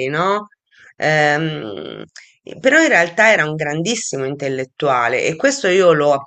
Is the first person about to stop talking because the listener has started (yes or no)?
no